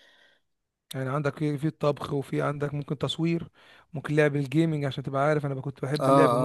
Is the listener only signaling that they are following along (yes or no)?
no